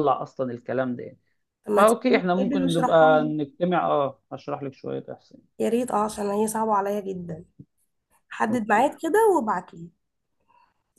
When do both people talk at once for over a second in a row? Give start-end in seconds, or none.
1.8-3.3